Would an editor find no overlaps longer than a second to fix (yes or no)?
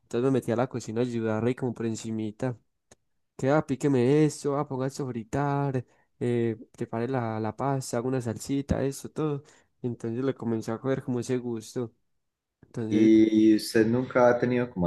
yes